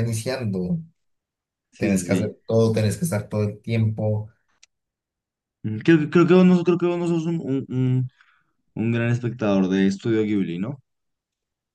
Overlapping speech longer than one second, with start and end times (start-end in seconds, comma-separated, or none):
none